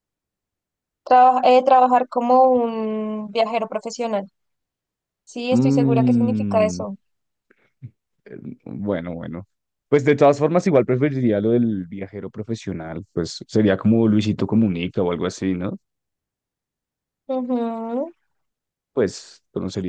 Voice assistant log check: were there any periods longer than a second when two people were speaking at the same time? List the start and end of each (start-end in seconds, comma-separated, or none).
5.5-6.8